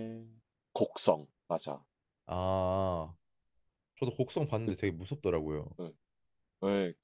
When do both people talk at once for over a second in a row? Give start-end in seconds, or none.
none